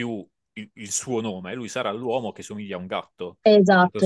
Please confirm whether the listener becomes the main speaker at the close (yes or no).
yes